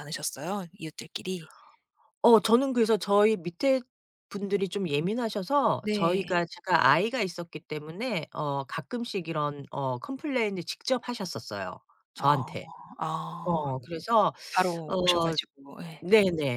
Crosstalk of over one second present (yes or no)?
no